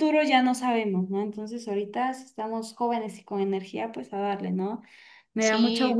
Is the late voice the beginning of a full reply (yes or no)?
no